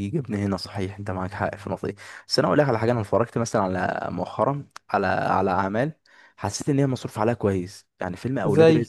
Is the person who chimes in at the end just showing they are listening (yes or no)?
yes